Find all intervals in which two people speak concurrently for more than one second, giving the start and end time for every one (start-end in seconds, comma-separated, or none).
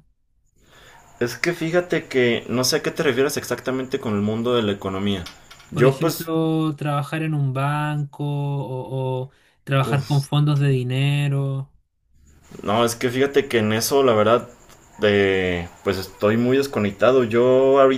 none